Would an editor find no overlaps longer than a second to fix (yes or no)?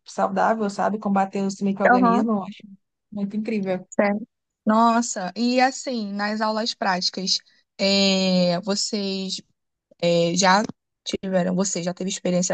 yes